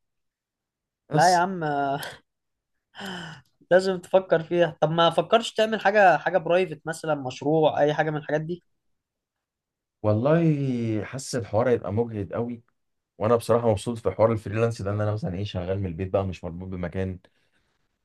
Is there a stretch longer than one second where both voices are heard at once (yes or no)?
no